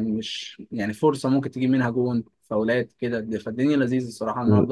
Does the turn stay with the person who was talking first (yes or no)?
no